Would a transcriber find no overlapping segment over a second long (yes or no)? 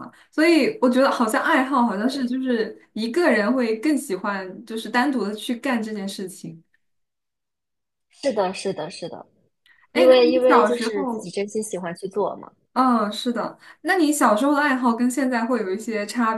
no